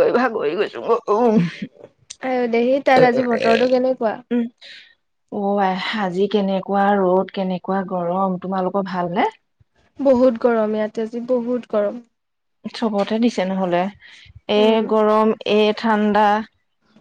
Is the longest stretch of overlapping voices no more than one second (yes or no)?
yes